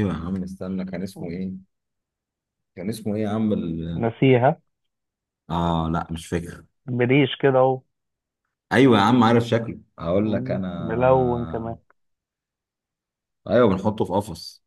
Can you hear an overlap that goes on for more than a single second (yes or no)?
yes